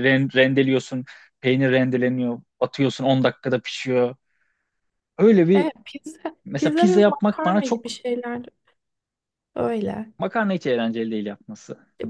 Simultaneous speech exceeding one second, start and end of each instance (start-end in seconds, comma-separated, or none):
6.5-8.0